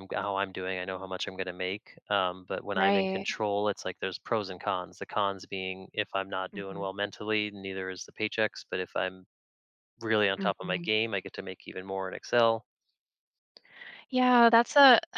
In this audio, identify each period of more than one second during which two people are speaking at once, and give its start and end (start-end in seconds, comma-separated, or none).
none